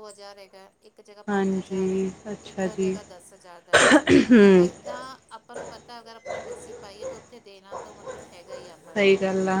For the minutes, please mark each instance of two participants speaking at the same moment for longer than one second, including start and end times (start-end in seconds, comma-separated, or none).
1.3-2.9